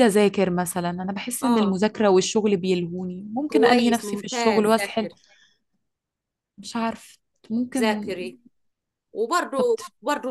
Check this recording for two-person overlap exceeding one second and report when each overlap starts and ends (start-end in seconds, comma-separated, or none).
3.5-5.1